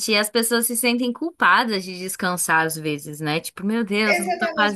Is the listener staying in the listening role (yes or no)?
no